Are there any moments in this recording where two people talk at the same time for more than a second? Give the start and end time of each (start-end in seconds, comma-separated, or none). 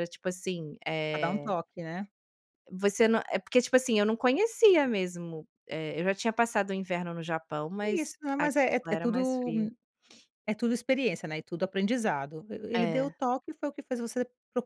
7.8-9.5